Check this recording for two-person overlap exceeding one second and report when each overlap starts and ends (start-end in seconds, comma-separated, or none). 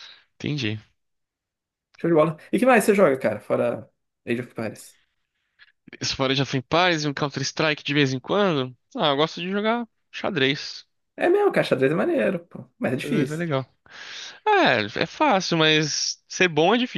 none